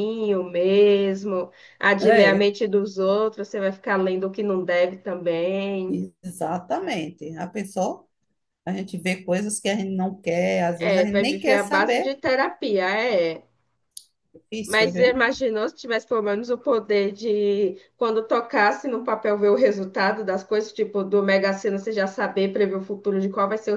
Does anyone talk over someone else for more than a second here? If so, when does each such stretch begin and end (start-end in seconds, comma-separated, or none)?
10.8-12.1